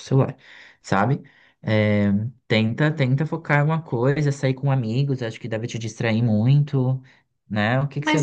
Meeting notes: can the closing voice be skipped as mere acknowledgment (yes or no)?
no